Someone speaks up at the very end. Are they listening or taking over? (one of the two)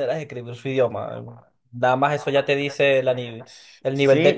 taking over